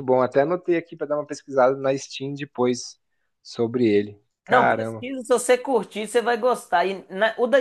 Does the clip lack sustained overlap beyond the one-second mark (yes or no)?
yes